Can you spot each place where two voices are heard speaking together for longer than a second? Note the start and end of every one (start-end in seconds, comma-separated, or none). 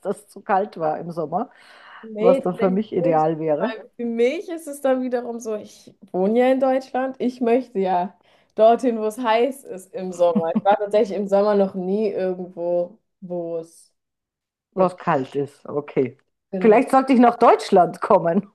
2.2-3.7